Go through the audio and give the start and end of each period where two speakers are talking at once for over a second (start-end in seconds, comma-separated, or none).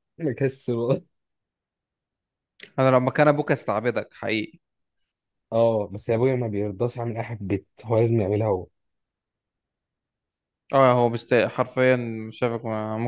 none